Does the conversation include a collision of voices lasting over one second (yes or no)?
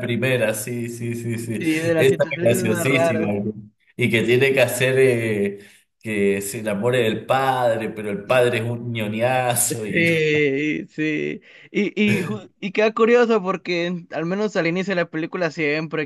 yes